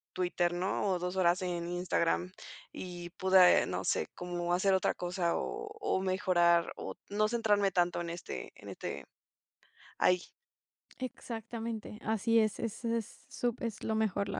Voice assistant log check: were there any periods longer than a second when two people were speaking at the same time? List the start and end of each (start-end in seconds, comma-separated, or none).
none